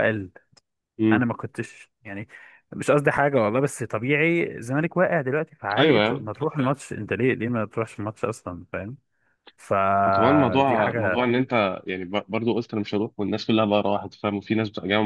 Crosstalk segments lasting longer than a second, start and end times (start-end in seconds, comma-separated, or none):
10.0-11.3